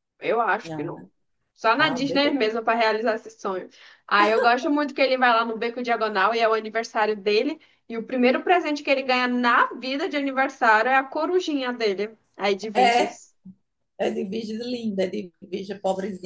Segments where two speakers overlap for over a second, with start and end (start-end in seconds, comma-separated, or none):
none